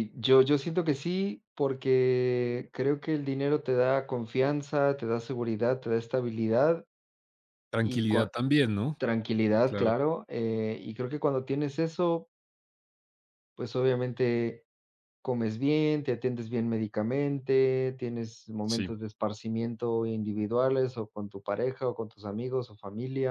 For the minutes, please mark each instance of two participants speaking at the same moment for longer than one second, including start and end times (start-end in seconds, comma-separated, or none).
none